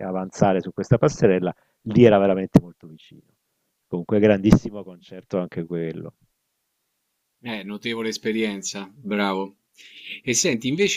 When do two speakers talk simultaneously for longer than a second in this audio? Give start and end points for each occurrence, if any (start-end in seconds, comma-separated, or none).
none